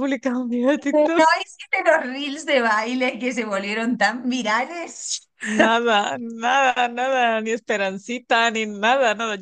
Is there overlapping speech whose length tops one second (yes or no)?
no